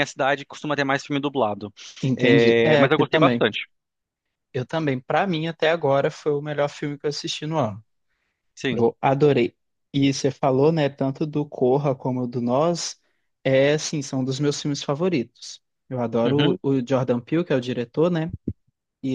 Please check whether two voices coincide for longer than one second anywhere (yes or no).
yes